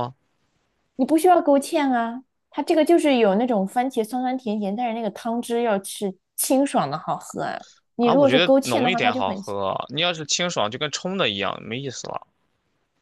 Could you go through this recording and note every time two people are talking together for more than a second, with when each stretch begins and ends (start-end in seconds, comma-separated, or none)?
8.0-9.5